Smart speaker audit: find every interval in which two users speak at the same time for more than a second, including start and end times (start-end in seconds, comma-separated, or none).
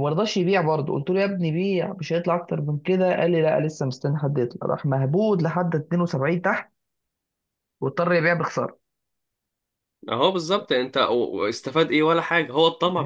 none